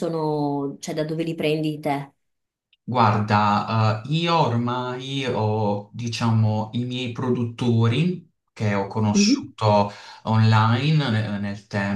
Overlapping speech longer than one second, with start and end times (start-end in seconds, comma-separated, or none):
none